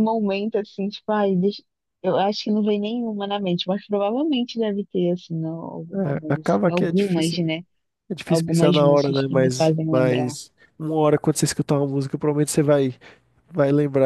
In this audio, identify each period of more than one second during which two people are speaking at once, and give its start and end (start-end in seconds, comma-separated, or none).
5.9-7.4, 8.3-10.3